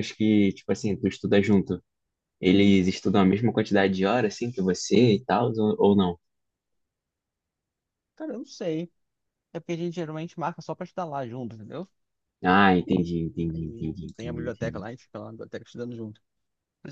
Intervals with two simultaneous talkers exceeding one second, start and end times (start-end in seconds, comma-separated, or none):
13.5-14.8